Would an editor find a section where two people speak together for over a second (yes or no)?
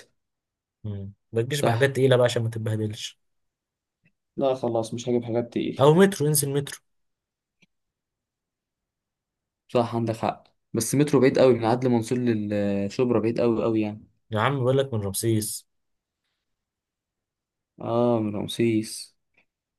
no